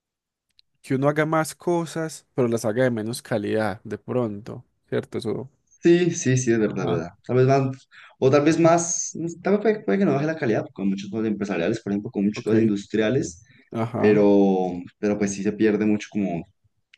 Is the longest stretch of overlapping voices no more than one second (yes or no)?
yes